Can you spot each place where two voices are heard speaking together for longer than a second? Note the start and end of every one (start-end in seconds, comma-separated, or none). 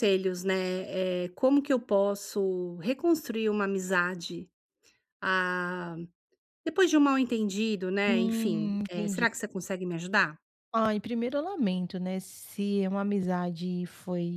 8.1-9.2